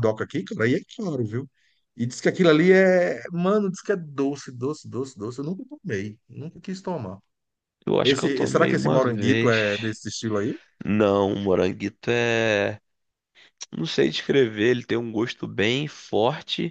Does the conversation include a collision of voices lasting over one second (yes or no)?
yes